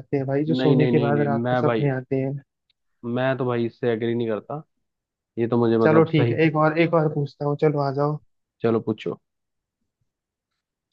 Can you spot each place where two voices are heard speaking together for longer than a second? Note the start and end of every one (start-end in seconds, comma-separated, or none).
0.6-1.9